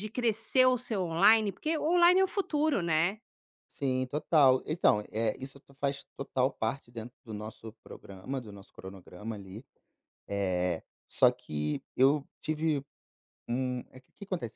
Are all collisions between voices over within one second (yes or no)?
yes